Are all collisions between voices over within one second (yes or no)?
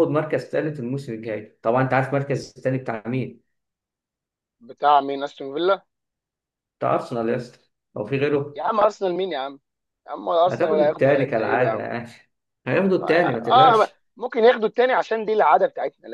no